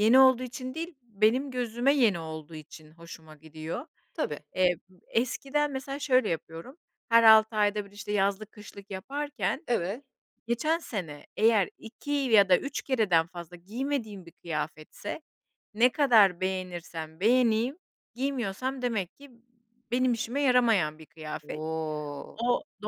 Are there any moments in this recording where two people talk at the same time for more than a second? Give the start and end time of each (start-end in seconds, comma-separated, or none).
none